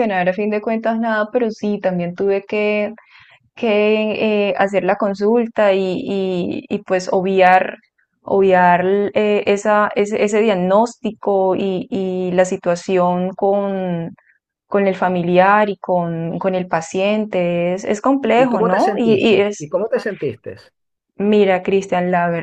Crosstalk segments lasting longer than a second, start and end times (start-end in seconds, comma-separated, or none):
18.3-19.7